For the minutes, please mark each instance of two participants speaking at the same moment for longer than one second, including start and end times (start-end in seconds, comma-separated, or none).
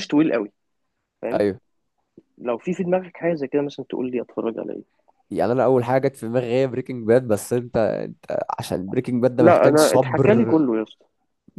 9.4-10.6